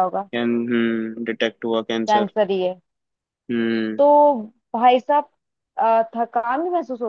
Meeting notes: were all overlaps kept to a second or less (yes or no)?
yes